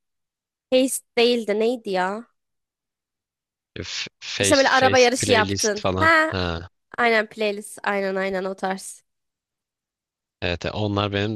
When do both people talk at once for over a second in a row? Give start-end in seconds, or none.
4.4-6.3